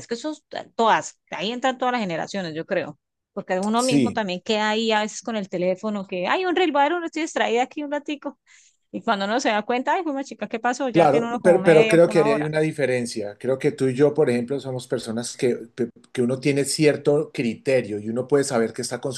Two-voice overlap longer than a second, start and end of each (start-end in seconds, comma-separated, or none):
10.9-12.5